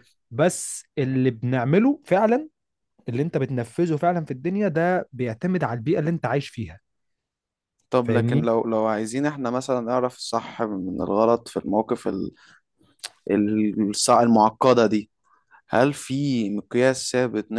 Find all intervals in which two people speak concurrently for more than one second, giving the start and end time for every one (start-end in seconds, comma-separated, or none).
none